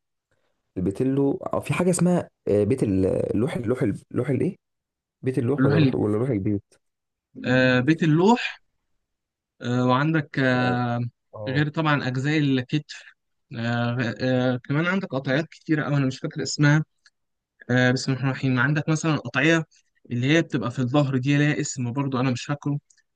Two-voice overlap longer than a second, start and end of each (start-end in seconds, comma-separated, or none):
none